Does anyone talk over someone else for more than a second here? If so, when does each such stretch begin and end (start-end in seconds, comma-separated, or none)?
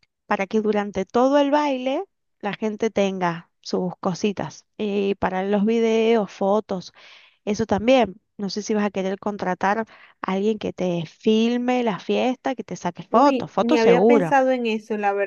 13.1-14.4